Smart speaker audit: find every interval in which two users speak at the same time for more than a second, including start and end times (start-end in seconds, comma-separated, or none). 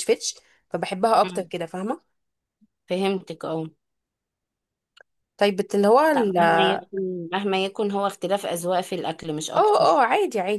none